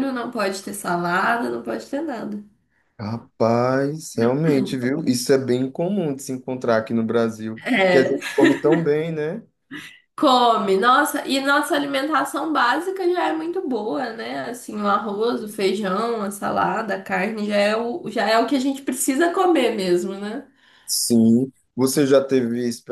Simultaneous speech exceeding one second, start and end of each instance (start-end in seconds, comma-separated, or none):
none